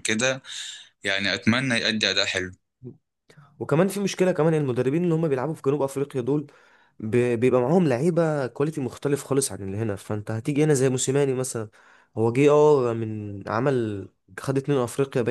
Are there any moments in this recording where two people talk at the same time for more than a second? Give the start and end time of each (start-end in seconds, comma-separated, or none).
none